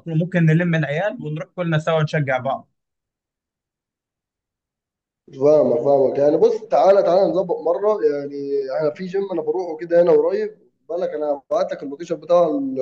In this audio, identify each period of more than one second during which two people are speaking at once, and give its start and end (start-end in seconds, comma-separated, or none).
none